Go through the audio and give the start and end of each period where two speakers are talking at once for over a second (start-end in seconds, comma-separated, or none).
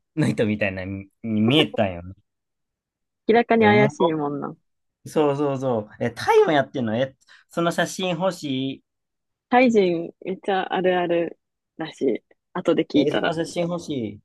none